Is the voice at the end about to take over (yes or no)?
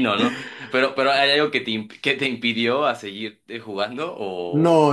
yes